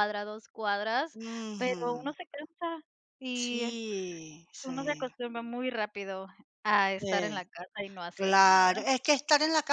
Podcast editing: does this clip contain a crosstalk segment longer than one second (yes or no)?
no